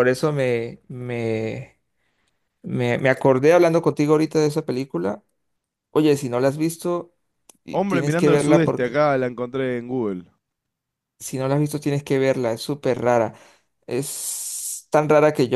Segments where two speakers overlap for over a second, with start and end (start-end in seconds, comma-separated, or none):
7.7-9.0